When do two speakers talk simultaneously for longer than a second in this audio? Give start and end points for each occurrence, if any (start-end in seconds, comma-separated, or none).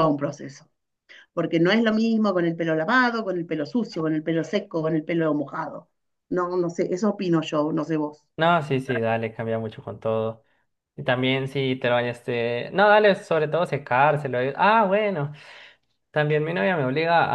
none